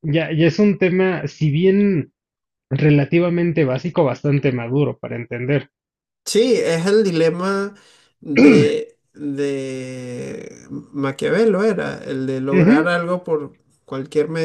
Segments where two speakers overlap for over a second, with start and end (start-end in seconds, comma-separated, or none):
none